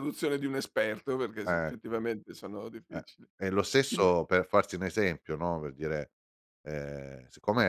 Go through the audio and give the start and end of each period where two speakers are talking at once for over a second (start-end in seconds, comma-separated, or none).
none